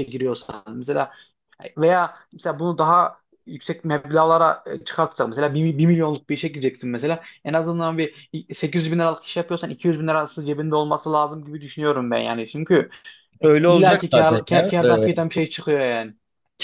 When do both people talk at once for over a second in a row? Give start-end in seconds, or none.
13.7-15.1